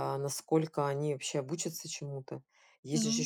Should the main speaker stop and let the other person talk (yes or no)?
no